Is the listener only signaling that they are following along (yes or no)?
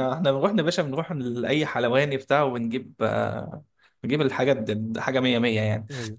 yes